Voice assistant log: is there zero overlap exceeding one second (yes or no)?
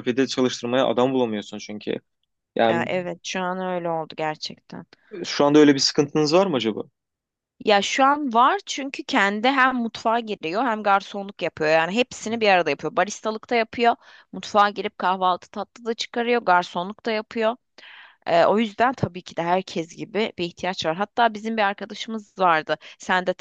yes